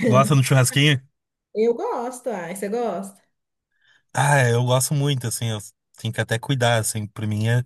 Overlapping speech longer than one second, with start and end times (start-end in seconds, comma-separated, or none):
none